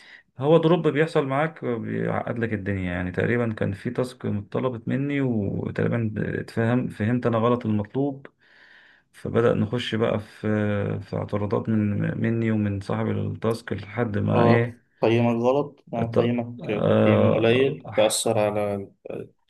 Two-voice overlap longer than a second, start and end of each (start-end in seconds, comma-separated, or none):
16.0-17.8